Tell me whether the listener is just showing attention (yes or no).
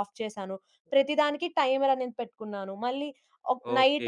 no